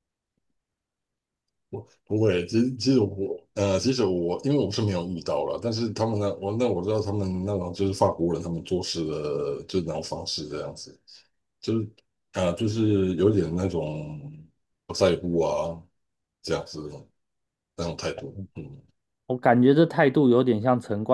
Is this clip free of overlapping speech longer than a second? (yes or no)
yes